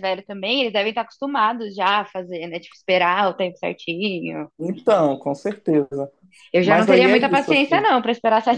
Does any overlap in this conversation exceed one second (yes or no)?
yes